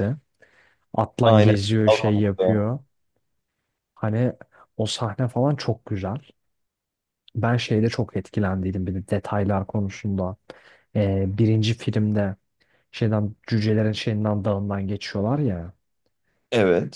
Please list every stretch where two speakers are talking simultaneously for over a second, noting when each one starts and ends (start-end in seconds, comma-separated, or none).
1.2-2.6